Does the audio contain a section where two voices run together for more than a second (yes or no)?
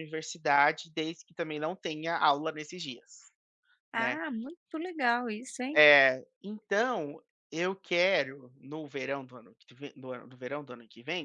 no